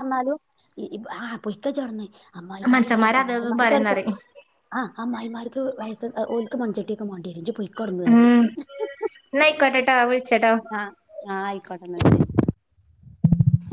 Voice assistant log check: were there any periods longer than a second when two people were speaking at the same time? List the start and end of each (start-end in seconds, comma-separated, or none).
2.7-4.0